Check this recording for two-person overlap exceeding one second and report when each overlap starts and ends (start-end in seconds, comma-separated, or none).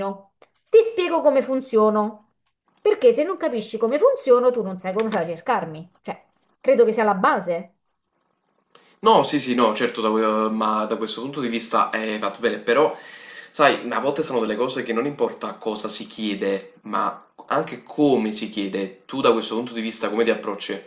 none